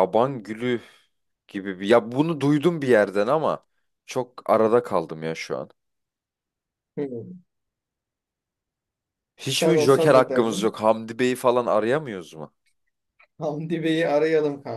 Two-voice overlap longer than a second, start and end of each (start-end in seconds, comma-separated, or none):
9.5-10.8